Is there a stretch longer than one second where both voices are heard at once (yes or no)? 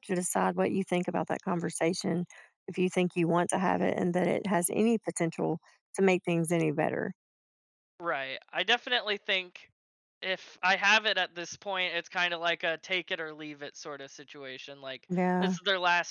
no